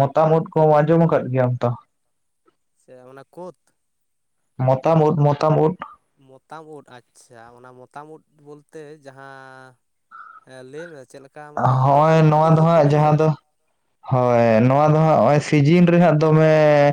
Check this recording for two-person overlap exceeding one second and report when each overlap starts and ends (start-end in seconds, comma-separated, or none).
11.6-13.3